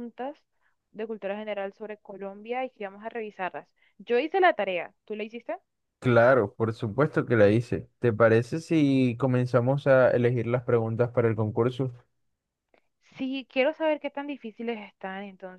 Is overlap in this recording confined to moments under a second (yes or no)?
yes